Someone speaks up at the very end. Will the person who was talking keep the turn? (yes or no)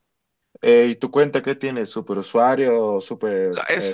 no